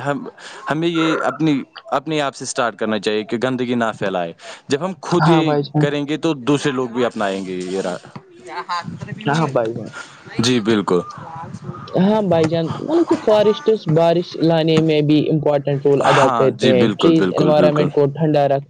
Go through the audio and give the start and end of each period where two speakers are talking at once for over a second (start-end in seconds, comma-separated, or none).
16.0-17.9